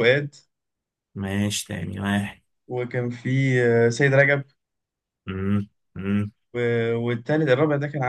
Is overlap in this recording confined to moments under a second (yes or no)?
yes